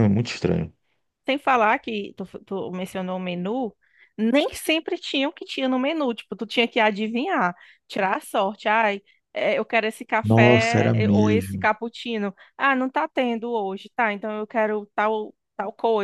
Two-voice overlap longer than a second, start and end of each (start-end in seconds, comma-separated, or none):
10.2-11.7